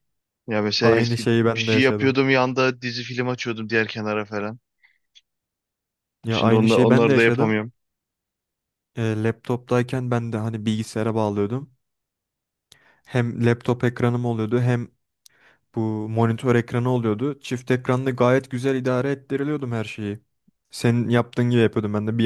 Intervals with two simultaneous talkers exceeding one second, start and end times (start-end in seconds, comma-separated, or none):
0.8-2.2, 6.3-7.6